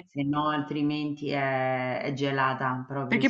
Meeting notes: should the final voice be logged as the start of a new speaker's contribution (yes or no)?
yes